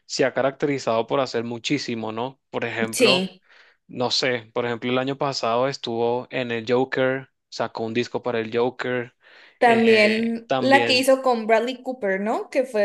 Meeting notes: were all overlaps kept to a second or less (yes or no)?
no